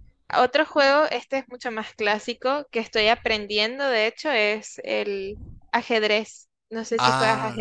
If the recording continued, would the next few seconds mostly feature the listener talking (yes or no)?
yes